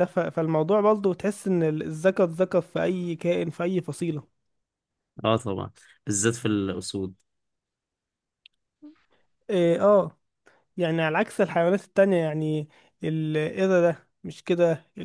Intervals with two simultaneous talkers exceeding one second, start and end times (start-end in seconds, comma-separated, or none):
none